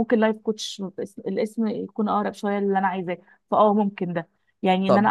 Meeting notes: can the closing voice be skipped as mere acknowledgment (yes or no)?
yes